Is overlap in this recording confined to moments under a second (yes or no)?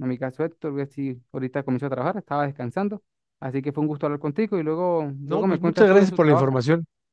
no